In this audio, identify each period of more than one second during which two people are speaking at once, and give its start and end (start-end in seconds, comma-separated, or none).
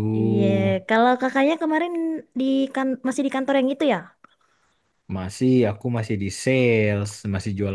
none